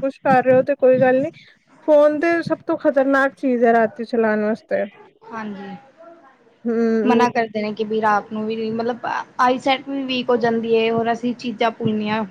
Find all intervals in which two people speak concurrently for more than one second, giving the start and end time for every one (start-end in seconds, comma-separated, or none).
none